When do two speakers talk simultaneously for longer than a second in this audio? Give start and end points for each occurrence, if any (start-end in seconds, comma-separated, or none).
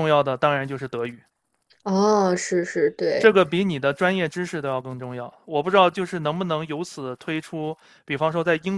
none